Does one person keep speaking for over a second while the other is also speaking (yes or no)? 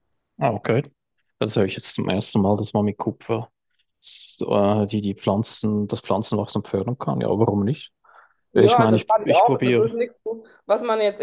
yes